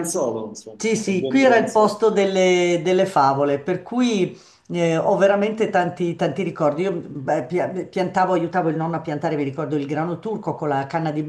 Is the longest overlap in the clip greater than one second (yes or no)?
yes